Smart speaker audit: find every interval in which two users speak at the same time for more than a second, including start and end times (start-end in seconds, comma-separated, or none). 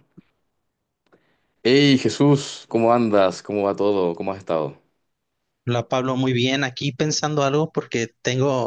none